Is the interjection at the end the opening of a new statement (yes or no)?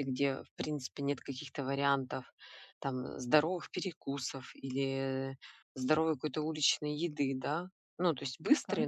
no